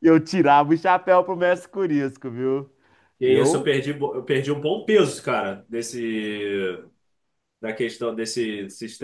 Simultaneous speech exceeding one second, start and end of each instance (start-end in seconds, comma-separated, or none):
none